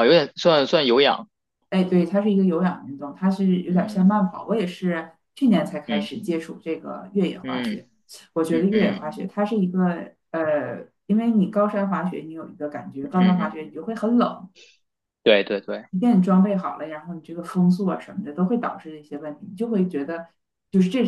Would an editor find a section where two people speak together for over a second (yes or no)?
no